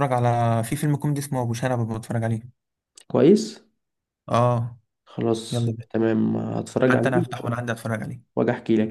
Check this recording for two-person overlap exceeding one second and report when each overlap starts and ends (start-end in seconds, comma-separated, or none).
none